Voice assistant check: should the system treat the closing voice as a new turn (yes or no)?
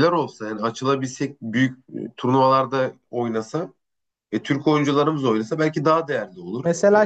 yes